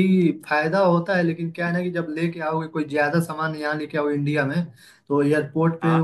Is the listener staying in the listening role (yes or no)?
yes